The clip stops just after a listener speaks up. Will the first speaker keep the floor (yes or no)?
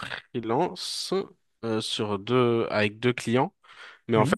yes